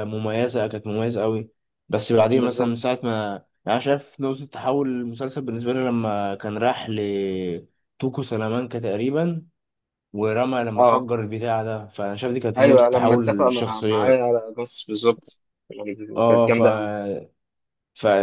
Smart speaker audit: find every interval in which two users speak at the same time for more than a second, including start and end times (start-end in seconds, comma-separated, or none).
12.6-14.2